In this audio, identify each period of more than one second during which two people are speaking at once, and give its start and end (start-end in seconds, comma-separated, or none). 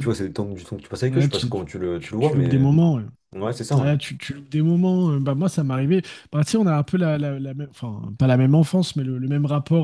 1.1-2.6